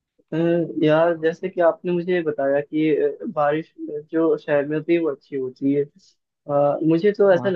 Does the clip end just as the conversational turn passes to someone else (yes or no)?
no